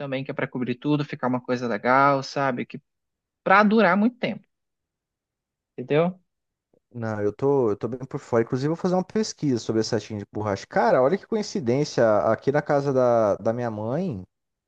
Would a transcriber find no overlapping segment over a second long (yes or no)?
yes